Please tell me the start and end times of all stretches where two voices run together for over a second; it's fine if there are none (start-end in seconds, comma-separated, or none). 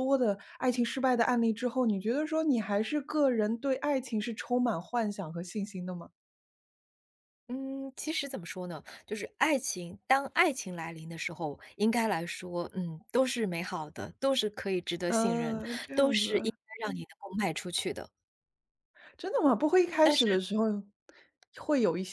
15.1-16.5